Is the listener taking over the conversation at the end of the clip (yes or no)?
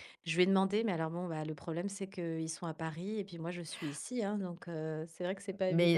yes